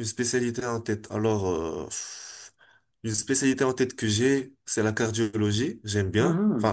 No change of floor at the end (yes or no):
no